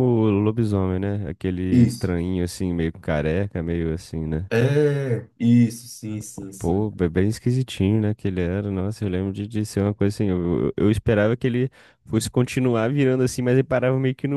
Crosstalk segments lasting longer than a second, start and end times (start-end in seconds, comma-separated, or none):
none